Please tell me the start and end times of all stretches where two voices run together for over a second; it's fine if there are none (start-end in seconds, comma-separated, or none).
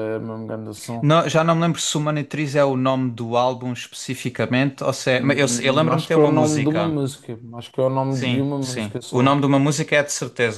5.1-7.0, 8.1-9.4